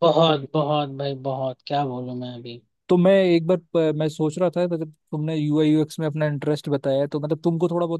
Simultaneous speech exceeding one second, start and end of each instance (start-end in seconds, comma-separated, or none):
none